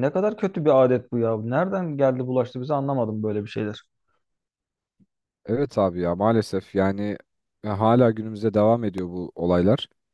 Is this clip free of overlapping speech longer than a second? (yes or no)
yes